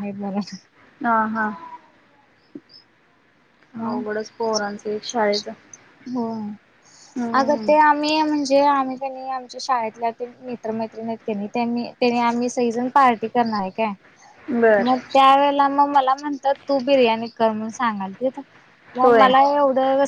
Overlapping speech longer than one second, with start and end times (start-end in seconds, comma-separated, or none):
none